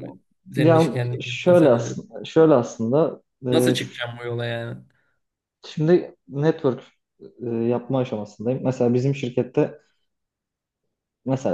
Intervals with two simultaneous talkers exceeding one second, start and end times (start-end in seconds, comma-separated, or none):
0.6-2.0